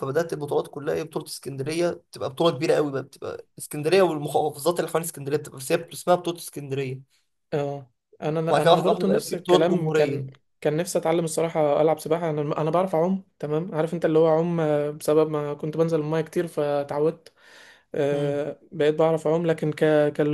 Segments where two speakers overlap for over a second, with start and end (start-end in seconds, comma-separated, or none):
8.5-10.2